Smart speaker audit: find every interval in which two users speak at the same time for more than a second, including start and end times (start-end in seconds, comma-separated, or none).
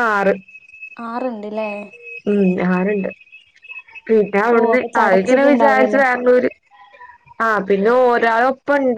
4.5-6.0